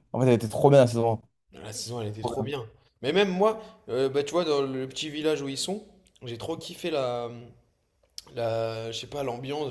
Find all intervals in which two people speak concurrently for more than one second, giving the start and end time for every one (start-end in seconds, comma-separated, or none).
none